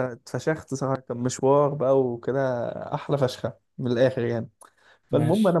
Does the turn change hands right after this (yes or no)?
no